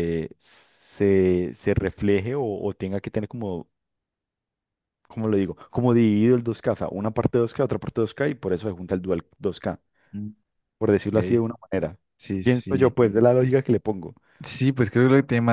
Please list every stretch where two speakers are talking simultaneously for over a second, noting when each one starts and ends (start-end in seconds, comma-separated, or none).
none